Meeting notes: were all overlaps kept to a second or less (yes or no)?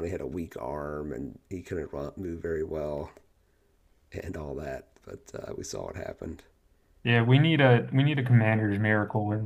yes